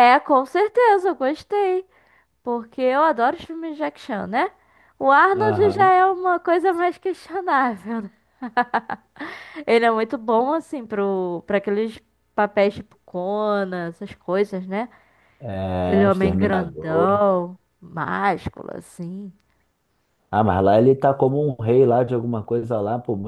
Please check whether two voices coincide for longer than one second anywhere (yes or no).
yes